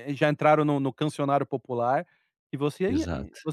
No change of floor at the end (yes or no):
yes